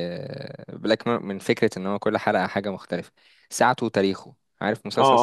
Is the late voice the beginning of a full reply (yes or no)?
yes